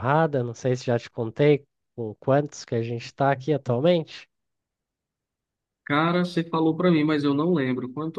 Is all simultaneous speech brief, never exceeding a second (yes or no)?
yes